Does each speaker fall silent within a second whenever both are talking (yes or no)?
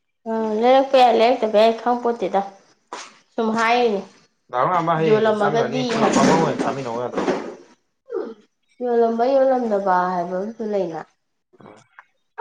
no